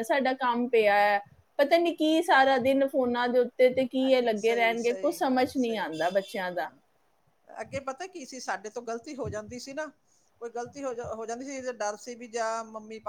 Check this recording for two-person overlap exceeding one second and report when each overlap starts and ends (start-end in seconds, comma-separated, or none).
4.1-5.9